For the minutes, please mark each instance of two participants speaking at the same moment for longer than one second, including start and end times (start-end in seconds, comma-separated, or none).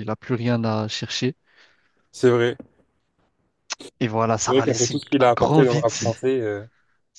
4.5-5.9